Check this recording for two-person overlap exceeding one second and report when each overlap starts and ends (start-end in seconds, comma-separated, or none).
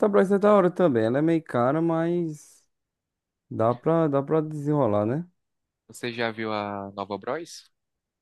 none